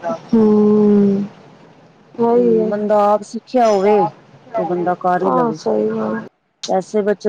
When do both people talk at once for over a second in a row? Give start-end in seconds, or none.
none